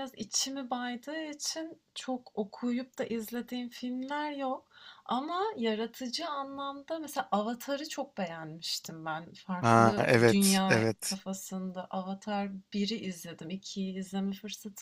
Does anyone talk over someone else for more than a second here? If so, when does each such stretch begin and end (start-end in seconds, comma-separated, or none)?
9.6-11.2